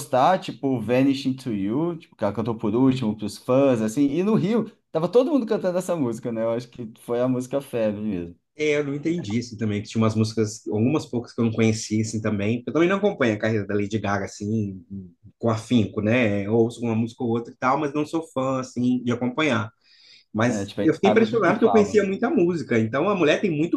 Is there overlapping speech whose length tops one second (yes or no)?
yes